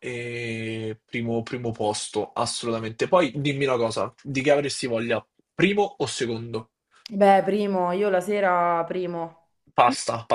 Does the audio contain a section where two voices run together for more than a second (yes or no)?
no